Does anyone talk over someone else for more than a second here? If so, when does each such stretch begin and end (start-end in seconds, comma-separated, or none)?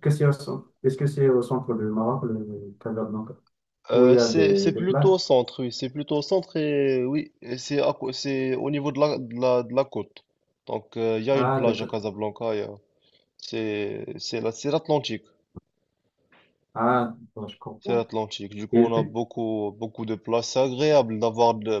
3.9-5.1